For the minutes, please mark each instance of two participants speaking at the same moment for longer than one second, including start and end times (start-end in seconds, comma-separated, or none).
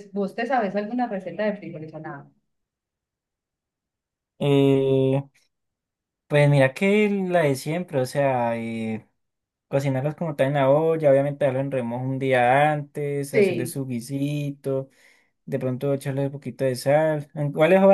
none